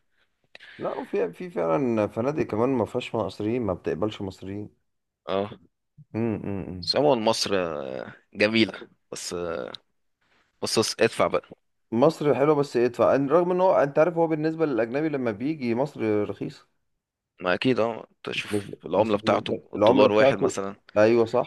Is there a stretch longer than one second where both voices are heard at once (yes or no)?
yes